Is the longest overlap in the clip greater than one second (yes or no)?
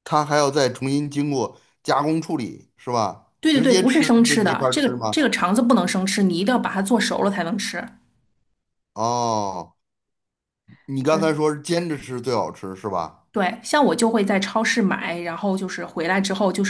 yes